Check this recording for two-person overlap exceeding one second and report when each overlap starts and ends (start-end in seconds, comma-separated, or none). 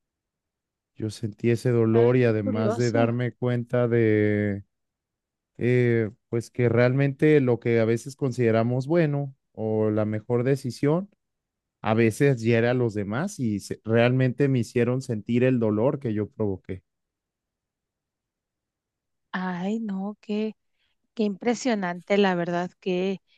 1.9-3.1